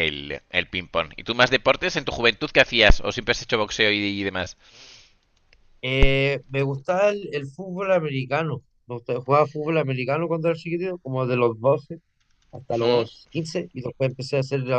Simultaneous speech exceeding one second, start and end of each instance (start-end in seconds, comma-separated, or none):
none